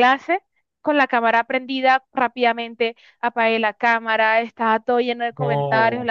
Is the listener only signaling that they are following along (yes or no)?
yes